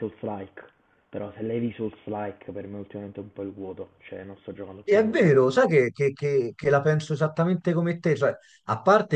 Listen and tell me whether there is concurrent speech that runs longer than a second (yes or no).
no